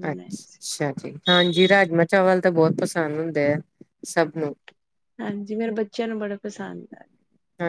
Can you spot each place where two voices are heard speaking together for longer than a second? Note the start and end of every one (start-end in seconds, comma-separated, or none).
none